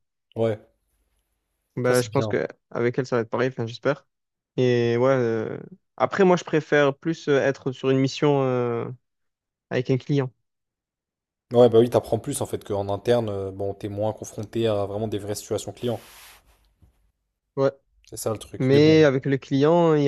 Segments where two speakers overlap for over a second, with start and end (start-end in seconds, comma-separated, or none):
none